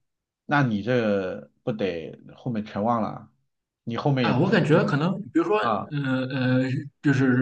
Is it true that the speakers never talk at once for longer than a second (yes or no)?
yes